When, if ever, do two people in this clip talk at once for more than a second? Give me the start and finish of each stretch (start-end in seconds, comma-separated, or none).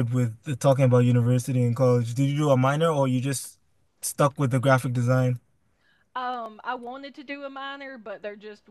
none